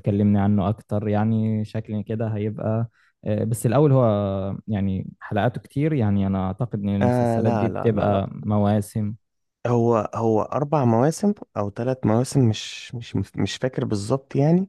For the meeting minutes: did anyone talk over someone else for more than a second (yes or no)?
yes